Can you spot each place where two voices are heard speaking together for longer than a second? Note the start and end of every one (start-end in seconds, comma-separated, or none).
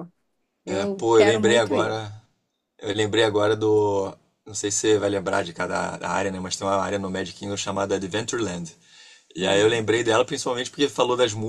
0.7-2.0